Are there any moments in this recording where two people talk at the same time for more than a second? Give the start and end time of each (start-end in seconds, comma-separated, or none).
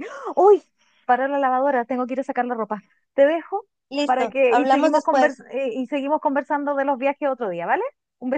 4.0-5.4